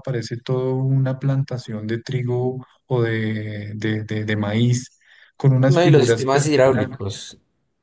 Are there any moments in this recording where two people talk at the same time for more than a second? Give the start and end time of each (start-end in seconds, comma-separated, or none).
5.7-7.0